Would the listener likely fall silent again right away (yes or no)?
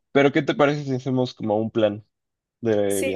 no